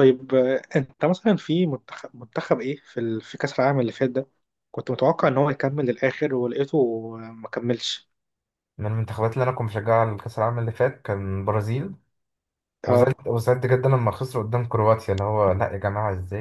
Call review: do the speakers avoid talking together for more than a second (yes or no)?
yes